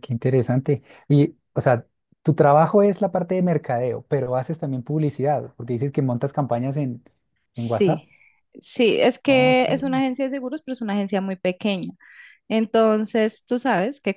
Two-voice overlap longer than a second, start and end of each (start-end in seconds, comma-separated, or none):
none